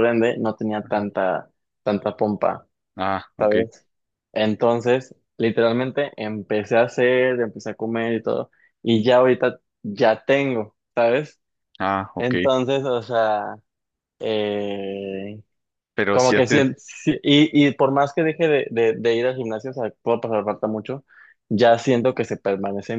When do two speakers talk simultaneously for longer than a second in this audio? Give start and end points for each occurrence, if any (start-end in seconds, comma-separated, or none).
none